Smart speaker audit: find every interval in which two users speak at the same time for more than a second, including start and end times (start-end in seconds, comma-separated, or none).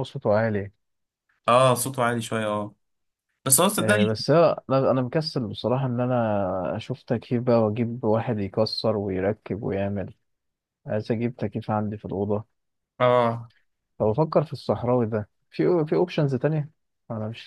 none